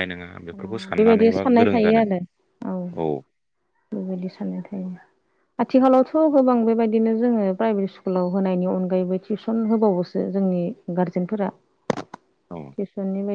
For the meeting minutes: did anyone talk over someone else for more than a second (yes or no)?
yes